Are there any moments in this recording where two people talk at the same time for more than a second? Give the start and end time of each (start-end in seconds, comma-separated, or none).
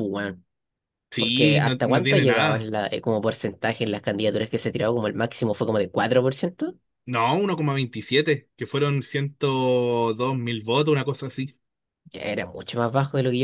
1.2-2.7